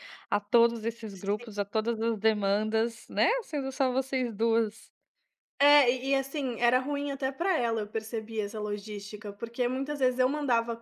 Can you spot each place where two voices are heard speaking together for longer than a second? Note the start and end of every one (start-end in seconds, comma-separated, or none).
none